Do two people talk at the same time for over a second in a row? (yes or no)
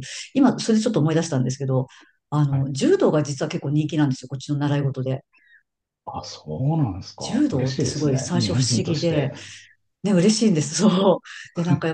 yes